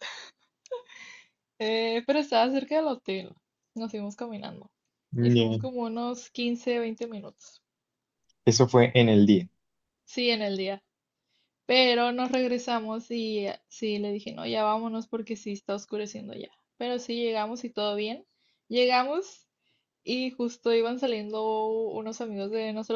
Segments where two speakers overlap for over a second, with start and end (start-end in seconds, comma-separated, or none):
none